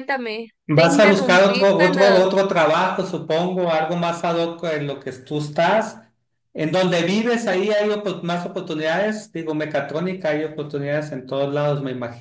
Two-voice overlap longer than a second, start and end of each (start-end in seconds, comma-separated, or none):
0.7-2.0